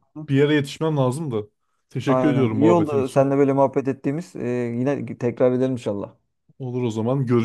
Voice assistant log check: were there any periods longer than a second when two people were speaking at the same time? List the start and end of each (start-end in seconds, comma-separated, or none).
2.1-3.3